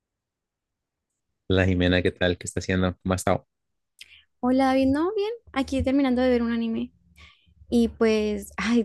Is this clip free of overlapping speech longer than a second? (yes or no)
yes